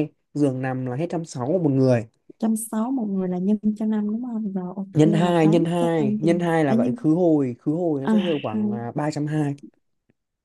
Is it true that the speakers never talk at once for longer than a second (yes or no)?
no